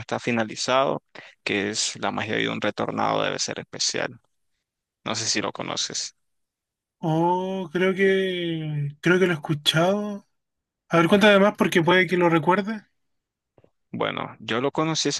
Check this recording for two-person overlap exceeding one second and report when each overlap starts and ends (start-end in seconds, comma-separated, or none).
none